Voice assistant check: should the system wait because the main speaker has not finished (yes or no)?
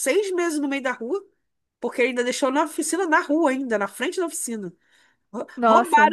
yes